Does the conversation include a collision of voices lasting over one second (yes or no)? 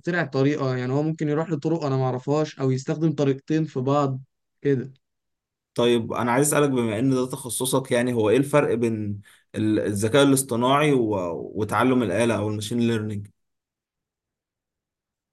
no